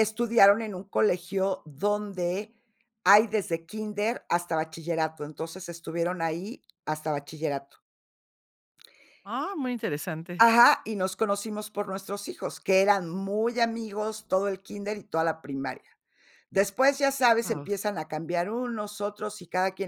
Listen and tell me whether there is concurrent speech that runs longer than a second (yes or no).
no